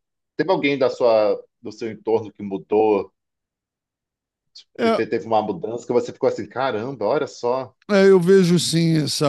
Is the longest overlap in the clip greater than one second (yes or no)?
no